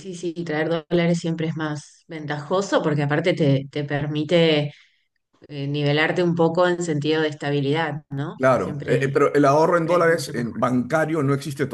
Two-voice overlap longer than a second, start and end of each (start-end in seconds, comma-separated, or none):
8.4-10.6